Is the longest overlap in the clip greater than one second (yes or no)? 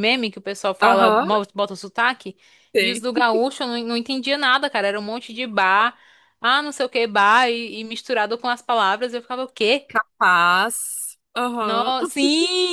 no